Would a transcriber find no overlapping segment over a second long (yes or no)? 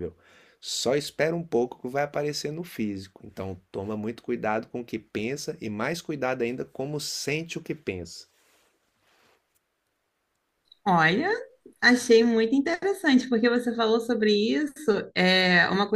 yes